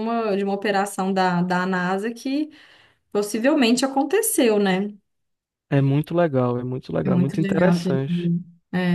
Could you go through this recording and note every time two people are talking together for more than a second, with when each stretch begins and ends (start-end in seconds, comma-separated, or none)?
7.0-8.3